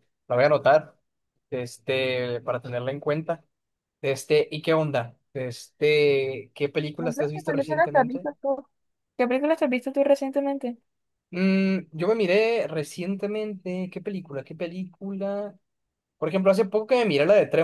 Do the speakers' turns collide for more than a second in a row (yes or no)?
yes